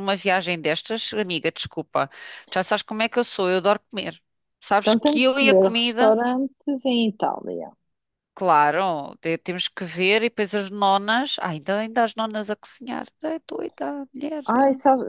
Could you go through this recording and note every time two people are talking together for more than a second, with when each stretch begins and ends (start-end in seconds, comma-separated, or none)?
4.8-6.1